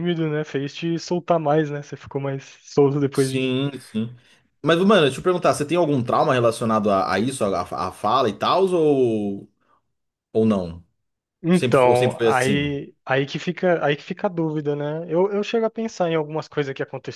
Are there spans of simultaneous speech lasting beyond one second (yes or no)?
yes